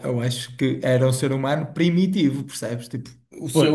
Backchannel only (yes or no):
no